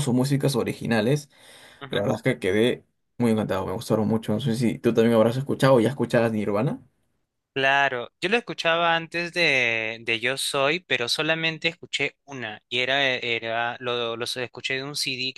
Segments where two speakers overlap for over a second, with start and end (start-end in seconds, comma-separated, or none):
none